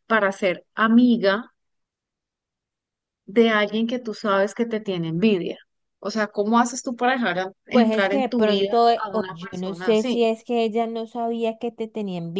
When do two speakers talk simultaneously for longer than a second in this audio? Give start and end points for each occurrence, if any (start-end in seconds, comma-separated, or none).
7.7-10.2